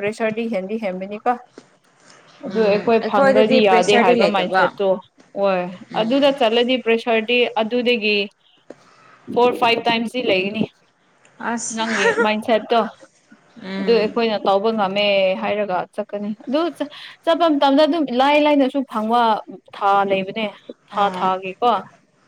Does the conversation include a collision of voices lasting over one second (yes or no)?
yes